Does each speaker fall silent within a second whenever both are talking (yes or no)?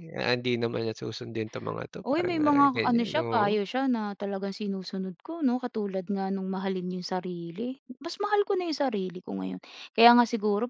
no